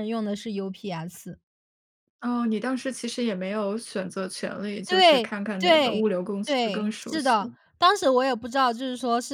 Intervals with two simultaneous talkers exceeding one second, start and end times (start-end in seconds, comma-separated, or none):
4.9-7.5